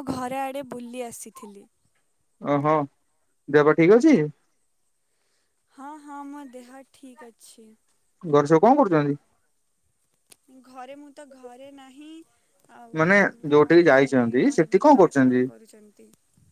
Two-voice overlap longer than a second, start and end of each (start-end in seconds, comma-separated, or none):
13.6-15.4